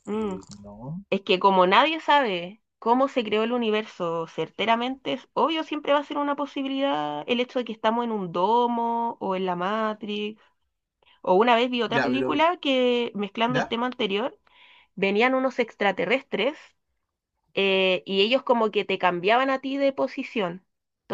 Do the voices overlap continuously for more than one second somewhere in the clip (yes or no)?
no